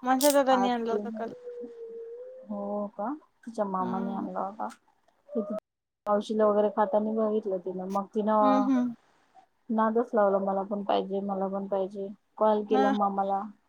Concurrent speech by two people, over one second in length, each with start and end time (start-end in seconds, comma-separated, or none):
none